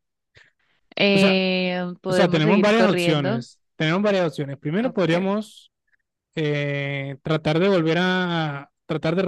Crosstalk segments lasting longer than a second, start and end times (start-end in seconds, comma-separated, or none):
2.1-3.5